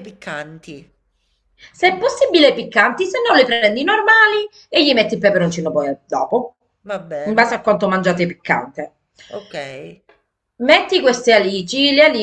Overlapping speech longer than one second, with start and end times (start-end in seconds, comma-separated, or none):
none